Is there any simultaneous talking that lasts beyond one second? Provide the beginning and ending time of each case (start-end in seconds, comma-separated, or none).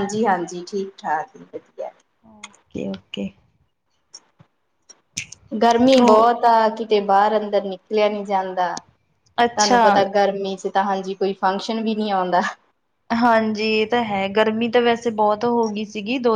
none